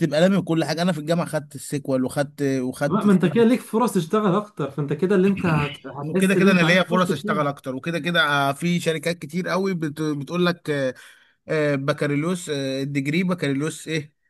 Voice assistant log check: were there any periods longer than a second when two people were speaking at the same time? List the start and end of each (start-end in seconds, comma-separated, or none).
6.0-7.6